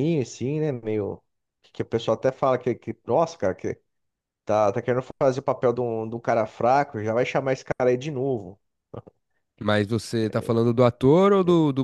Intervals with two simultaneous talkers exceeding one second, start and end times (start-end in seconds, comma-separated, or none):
none